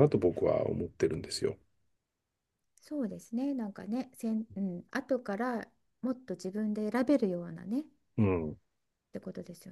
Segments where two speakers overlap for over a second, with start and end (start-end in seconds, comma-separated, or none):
none